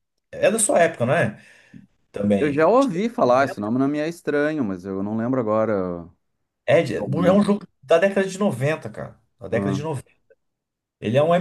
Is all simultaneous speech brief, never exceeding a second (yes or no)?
yes